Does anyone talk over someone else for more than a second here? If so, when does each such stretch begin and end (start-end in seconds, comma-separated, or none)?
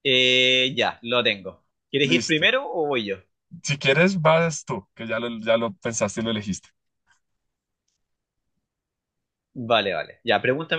none